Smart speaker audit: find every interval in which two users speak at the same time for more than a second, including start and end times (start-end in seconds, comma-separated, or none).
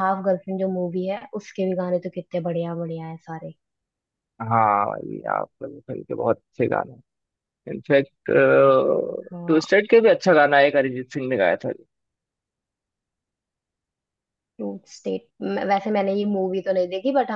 none